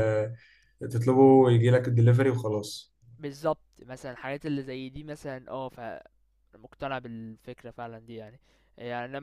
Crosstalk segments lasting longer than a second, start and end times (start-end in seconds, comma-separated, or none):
none